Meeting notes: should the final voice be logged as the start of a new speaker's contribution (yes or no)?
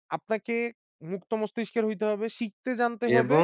yes